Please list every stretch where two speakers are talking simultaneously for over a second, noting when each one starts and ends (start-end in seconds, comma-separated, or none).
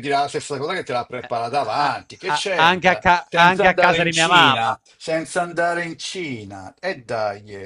1.2-4.8